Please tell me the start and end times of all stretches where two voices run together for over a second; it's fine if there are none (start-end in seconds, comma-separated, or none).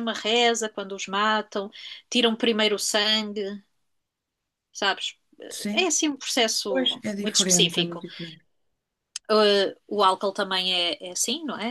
6.7-8.0